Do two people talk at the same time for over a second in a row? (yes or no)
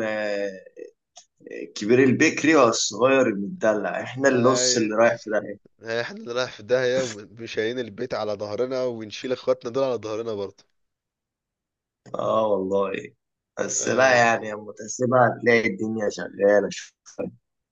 no